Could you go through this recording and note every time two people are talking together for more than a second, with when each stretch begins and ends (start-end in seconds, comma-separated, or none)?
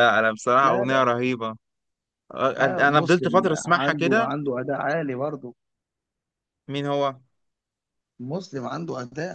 2.6-4.3